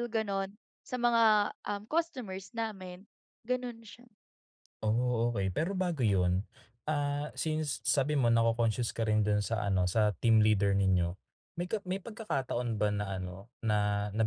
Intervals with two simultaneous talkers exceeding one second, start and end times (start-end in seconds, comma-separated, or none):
none